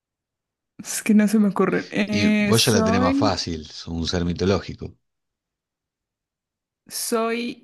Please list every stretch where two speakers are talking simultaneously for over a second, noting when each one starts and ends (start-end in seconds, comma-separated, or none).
2.1-3.4